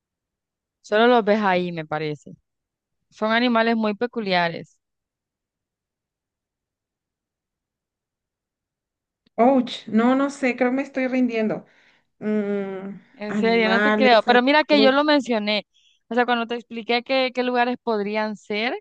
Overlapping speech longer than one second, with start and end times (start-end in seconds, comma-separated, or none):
13.1-15.0